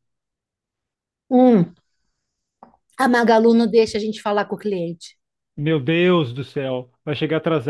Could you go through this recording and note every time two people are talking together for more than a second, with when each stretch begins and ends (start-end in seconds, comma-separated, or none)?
none